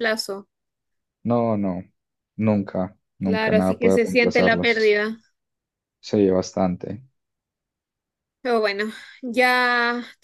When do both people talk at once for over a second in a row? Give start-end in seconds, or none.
3.2-5.0